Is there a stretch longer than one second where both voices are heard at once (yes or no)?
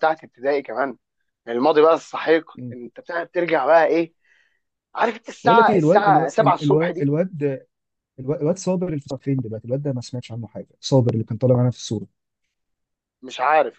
yes